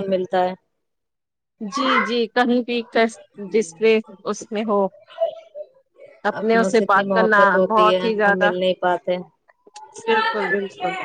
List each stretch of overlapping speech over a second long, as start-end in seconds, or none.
6.4-8.5